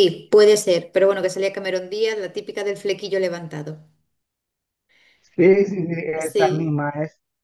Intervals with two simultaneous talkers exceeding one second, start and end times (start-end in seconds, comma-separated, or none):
none